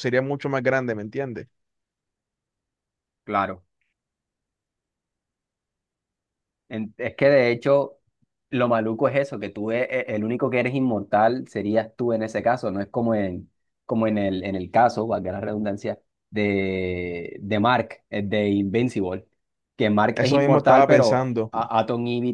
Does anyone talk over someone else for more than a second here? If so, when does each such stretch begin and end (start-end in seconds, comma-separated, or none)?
20.1-21.5